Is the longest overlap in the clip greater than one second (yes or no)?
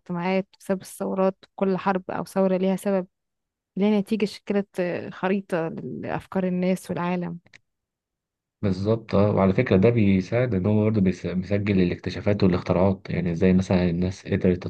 no